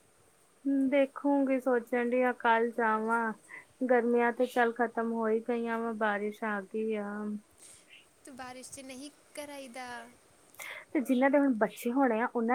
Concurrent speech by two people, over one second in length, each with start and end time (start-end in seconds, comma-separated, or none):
none